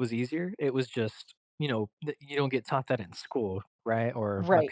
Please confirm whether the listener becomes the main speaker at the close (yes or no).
yes